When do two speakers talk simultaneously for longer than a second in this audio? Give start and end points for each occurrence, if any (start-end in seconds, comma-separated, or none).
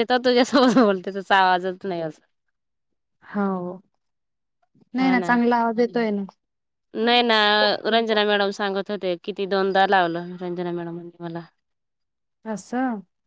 none